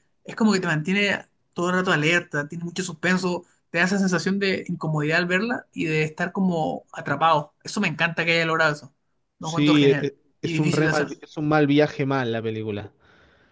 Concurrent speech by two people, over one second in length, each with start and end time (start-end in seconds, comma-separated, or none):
9.4-11.1